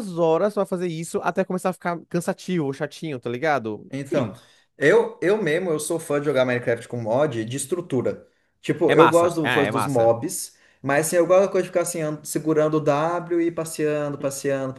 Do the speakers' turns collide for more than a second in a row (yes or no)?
yes